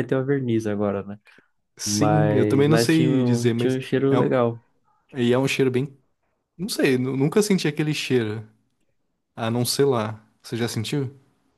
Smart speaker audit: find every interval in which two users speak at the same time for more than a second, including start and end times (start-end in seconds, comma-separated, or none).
1.8-4.3